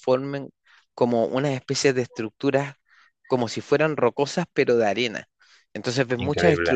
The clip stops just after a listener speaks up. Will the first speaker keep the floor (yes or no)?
yes